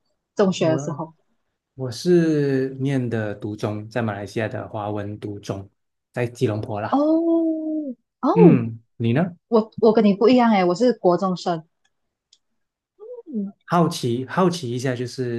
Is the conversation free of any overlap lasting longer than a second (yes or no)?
yes